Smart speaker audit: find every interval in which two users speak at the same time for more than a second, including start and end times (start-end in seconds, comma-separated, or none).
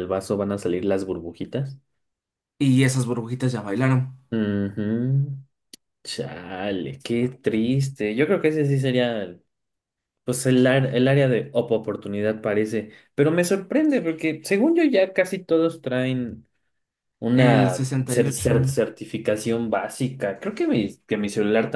17.3-18.5